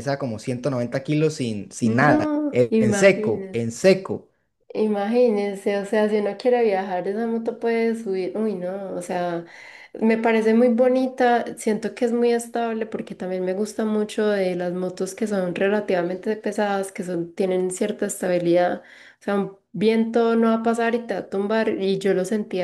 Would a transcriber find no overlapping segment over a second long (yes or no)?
no